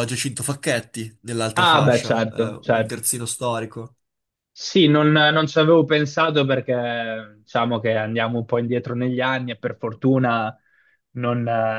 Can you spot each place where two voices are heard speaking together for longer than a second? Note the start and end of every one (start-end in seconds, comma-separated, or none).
1.6-3.0